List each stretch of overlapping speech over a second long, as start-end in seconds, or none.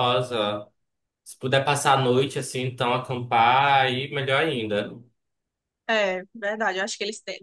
none